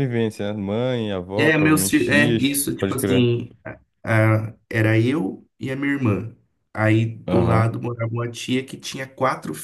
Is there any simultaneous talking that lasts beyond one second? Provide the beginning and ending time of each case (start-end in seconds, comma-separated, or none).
1.4-3.3